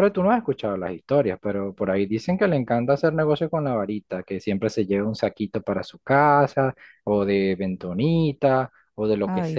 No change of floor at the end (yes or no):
yes